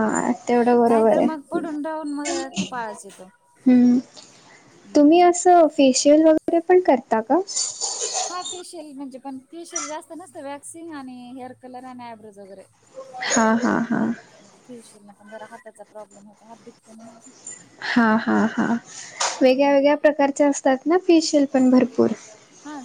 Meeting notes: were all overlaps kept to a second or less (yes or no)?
no